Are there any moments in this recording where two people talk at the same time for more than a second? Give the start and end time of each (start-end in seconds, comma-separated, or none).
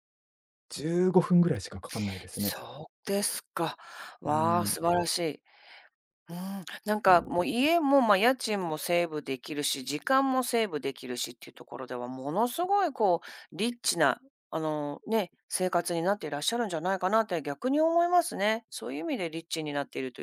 none